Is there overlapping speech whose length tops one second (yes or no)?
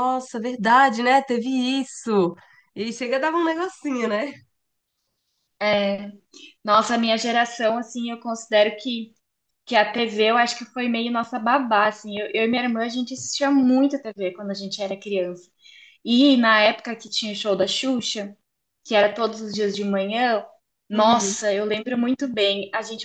no